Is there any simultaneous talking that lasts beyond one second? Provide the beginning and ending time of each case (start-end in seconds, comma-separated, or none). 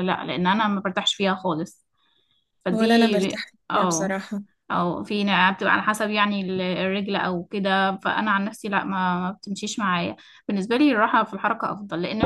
2.7-4.2